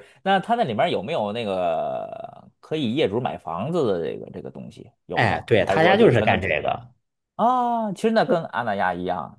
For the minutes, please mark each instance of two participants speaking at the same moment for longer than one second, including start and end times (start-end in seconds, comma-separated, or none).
5.1-6.7